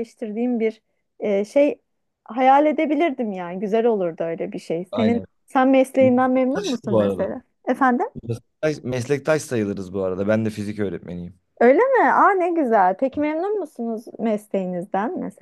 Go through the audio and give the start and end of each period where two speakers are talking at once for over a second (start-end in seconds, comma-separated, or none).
6.0-7.3